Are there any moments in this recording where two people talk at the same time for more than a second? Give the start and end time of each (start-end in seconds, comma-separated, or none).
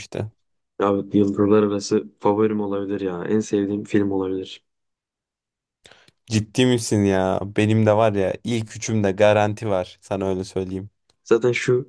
none